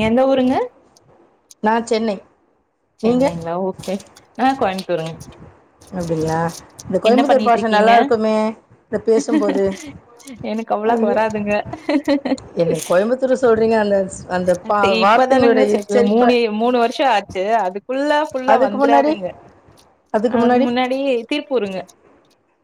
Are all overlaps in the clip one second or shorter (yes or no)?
no